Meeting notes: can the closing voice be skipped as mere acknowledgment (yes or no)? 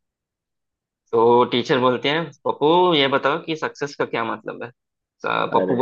yes